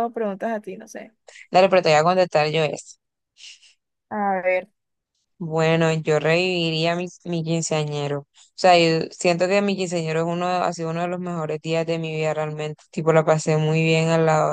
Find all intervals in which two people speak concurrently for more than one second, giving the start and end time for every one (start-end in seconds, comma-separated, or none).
none